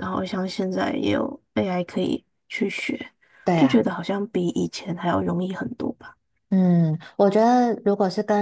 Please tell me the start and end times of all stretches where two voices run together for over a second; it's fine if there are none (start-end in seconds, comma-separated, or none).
none